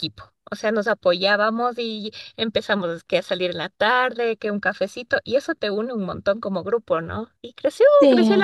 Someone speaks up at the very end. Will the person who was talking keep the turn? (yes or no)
yes